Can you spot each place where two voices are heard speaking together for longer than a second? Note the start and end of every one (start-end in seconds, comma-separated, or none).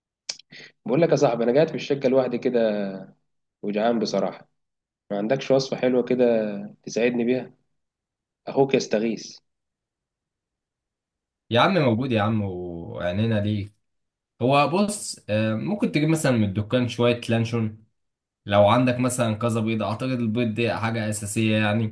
none